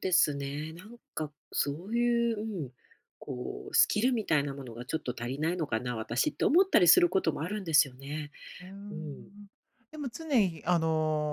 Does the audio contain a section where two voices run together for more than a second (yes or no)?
no